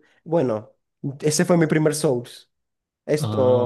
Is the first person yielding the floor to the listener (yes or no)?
no